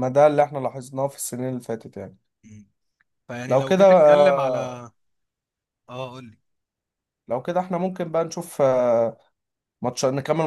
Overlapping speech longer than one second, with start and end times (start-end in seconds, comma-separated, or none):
3.5-4.8